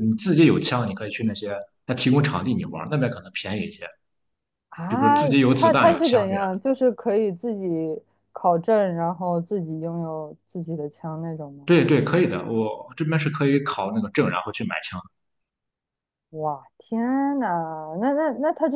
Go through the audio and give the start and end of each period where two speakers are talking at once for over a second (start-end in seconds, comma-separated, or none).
4.9-6.5